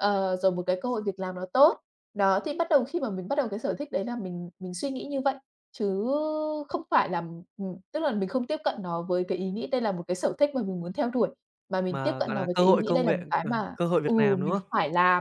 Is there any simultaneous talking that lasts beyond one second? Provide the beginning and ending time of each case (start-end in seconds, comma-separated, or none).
11.9-14.7